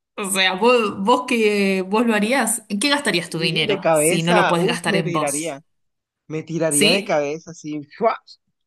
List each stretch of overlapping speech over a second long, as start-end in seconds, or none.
3.4-5.6